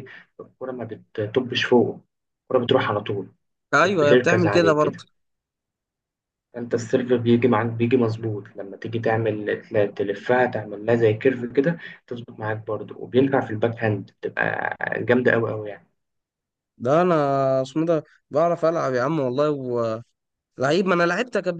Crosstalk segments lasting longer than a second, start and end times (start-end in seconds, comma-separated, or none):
3.8-5.0